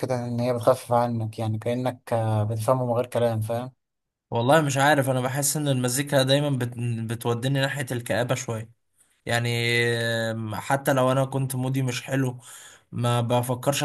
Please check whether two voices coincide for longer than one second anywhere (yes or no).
no